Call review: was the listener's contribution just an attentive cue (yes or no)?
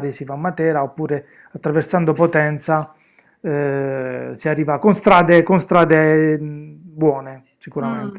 no